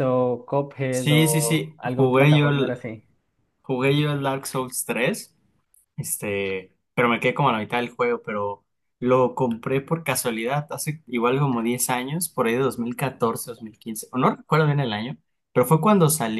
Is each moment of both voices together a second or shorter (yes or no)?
no